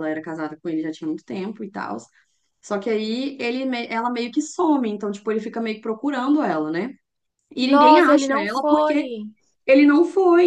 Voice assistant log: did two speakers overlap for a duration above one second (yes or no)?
yes